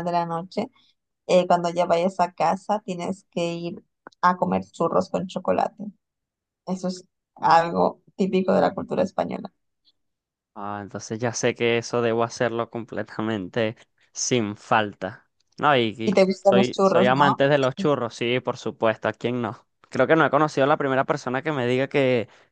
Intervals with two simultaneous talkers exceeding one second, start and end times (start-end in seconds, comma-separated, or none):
16.0-17.4